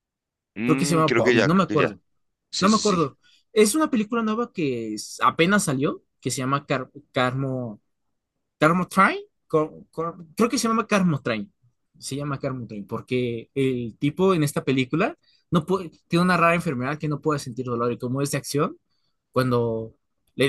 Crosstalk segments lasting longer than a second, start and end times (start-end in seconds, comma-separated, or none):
0.7-2.0